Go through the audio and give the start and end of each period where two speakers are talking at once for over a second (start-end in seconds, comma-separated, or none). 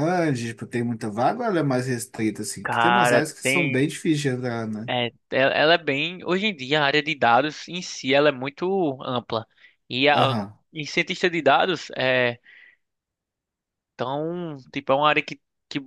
2.6-3.9